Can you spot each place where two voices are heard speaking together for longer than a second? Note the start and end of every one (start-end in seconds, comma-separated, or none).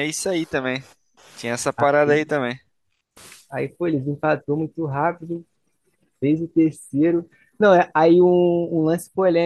none